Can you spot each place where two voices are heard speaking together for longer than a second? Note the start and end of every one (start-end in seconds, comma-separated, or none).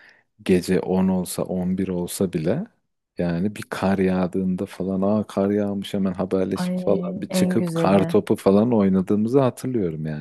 6.5-8.1